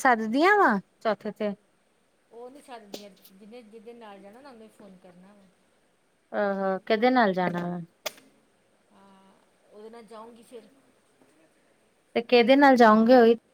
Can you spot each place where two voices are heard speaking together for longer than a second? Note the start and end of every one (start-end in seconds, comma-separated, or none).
none